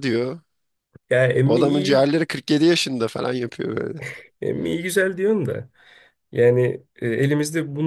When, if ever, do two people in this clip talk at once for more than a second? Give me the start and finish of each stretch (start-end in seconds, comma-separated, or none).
none